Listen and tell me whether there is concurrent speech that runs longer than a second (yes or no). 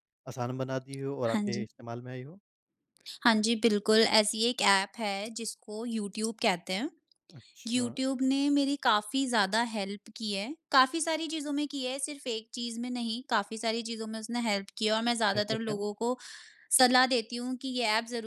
no